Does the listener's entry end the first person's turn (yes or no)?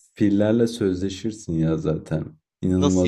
no